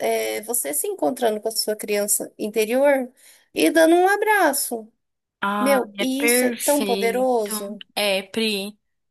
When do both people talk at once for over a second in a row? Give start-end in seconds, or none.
5.6-7.3